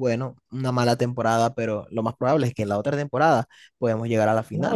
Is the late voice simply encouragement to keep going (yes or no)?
no